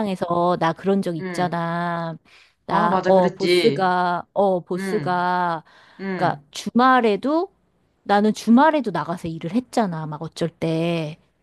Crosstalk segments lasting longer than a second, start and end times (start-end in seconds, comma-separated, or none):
2.7-3.9